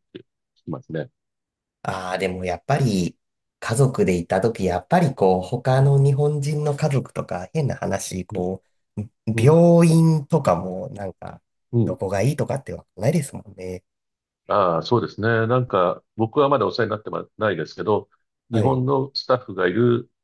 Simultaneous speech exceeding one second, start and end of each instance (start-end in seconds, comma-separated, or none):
none